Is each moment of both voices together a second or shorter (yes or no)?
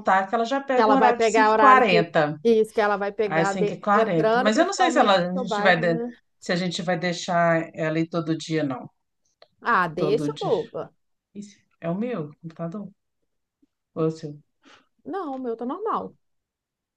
no